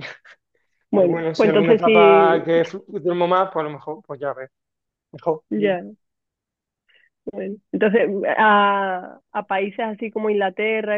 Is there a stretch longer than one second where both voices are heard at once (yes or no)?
yes